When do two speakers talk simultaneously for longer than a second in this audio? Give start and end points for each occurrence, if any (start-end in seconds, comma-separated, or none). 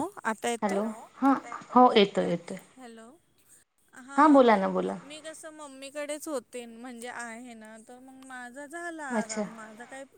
none